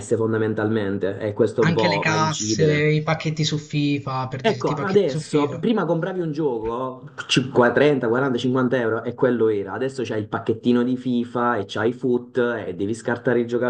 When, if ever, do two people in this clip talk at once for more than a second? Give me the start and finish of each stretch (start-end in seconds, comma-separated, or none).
1.6-2.9, 4.4-5.6